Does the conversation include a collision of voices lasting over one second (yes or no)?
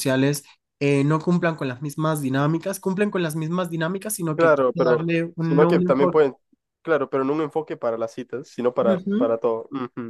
yes